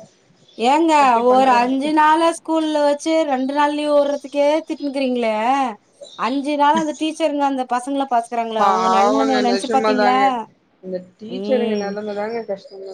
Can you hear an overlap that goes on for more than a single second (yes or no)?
yes